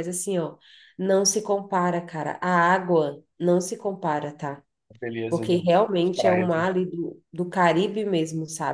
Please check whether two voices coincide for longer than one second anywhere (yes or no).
yes